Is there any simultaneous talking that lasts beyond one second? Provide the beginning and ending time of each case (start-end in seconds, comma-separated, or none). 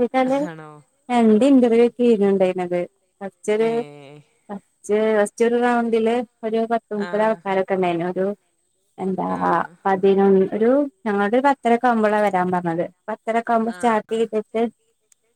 none